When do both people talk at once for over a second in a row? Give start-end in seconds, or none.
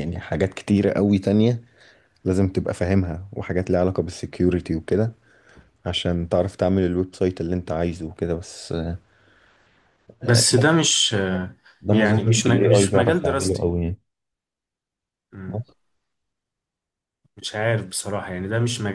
11.9-13.7